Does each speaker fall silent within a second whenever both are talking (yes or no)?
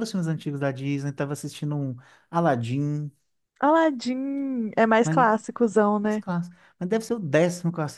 yes